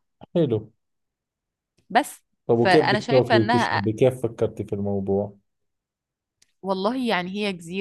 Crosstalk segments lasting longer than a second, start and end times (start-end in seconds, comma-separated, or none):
2.5-3.8